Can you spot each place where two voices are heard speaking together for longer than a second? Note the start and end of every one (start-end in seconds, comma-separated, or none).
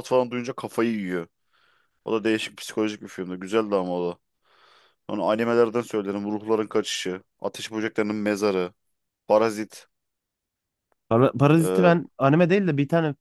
none